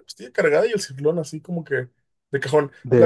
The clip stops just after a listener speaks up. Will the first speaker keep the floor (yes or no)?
yes